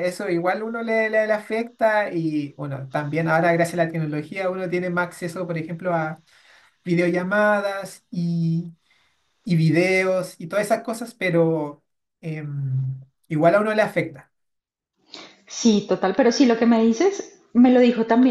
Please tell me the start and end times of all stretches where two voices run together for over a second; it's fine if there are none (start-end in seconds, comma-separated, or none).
none